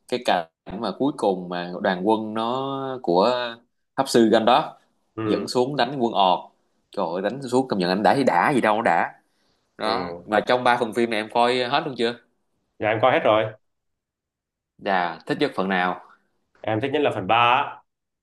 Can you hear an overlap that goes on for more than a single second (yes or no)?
no